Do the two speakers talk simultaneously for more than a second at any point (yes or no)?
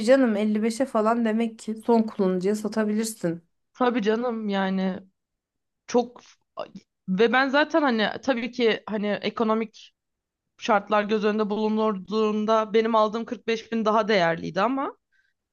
no